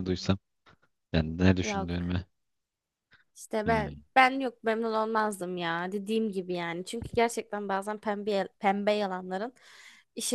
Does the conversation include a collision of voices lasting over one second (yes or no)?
no